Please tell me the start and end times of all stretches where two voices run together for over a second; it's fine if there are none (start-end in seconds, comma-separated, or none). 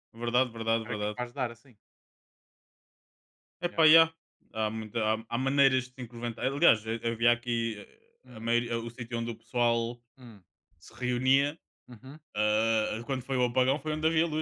none